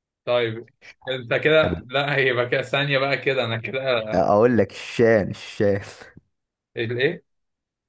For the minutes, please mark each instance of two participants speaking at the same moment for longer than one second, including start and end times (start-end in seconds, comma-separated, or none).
none